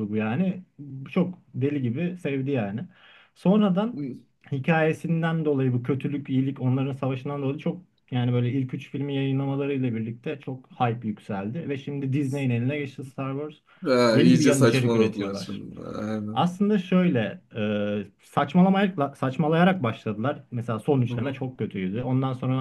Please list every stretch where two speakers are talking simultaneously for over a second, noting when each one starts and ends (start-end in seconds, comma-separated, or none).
14.1-15.7